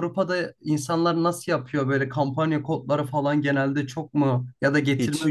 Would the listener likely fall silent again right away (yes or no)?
yes